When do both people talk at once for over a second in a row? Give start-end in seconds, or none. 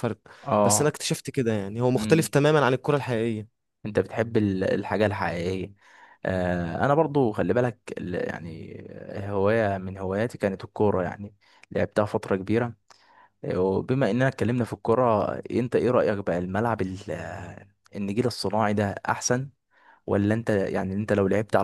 none